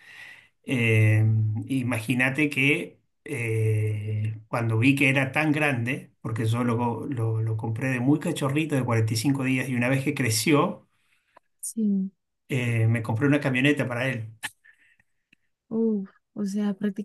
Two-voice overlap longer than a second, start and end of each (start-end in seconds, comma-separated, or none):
none